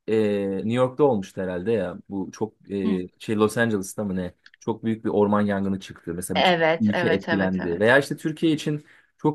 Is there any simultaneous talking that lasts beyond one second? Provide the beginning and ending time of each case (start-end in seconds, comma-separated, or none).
6.3-8.0